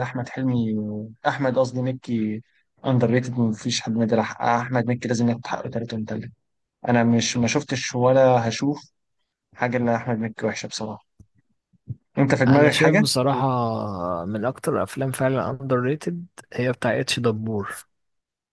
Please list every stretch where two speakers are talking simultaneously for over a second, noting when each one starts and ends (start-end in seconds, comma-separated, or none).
none